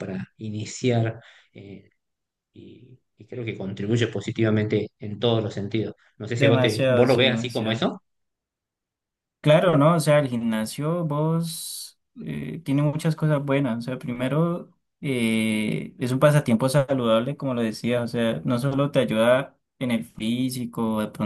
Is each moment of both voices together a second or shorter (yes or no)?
no